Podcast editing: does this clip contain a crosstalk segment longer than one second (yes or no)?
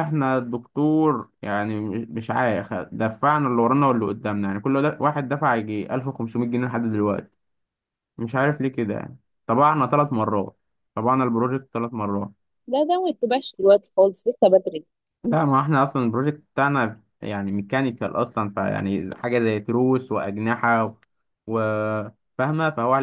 no